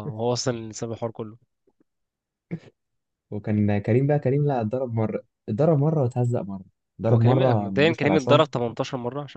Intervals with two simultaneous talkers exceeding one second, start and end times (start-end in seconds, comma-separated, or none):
7.1-8.4